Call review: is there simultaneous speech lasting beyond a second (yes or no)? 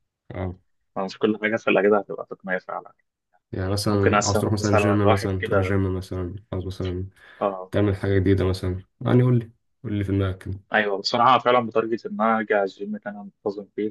yes